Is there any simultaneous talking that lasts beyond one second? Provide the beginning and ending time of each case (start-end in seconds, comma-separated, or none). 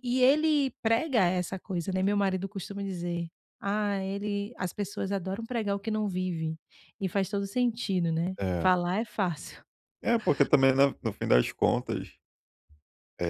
none